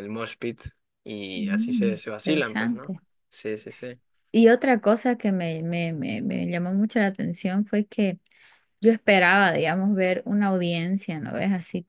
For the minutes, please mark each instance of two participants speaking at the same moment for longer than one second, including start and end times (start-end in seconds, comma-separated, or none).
1.3-2.9